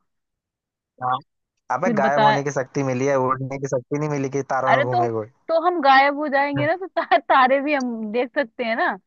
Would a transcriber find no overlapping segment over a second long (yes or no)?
yes